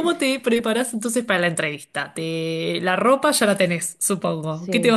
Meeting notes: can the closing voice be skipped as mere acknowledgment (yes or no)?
no